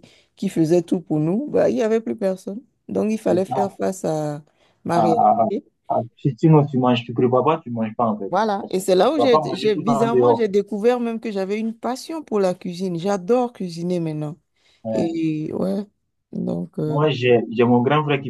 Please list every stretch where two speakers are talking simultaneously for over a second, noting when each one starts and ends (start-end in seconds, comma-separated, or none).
8.3-10.4